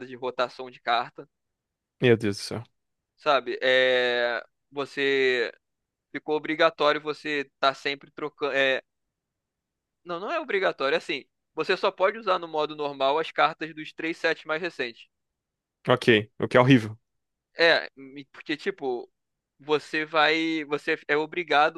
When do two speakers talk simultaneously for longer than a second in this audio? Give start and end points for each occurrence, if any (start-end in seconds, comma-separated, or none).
none